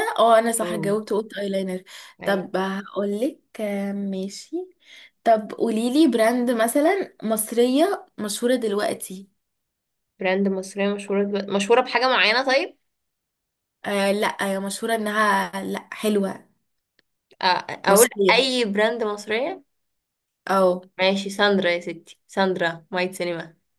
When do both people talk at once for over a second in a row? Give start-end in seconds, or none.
none